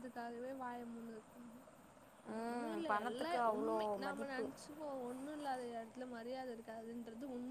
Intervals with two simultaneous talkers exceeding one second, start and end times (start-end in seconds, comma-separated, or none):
2.4-4.5